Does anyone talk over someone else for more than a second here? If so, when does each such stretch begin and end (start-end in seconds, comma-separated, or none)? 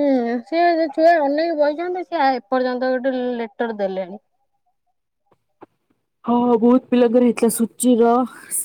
none